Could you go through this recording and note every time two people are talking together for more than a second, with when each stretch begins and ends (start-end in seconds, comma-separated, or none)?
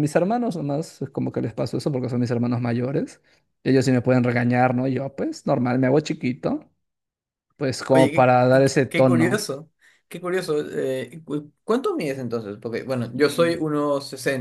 7.9-9.5